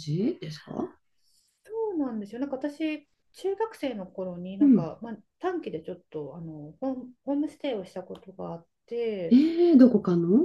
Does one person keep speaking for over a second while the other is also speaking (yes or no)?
no